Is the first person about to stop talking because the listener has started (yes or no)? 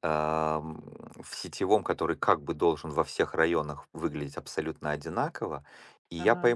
no